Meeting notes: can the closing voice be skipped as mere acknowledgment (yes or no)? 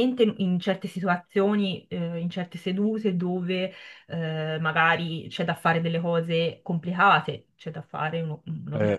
yes